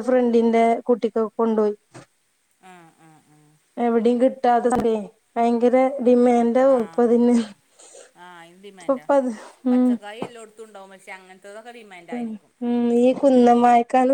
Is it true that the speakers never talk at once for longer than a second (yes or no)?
yes